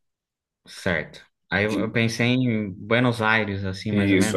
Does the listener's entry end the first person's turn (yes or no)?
yes